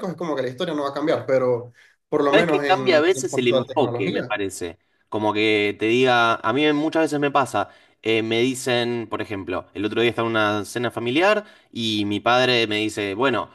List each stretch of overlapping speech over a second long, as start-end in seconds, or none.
2.3-4.3